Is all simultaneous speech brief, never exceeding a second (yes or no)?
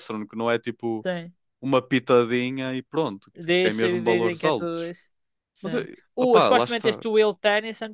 no